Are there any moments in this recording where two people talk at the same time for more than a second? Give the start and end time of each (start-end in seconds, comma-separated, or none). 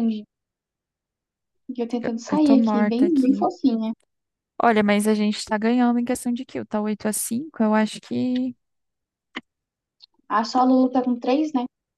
2.0-3.5